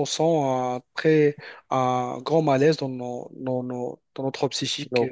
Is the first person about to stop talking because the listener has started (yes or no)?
yes